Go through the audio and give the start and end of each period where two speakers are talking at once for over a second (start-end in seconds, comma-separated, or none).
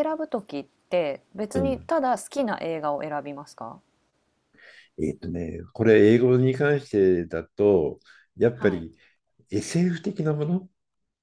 none